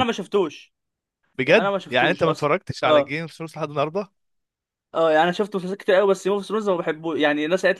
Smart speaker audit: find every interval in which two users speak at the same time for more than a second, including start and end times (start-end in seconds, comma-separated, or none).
1.5-3.2